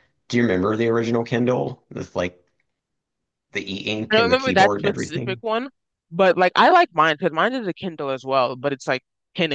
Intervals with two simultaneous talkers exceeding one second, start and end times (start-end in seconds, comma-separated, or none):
4.1-5.4